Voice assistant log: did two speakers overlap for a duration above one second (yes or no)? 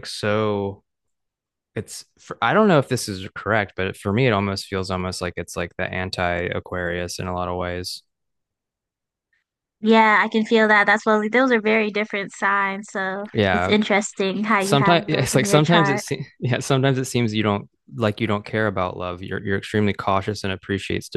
yes